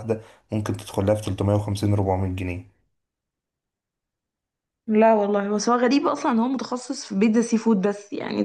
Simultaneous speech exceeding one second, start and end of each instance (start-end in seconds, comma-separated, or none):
none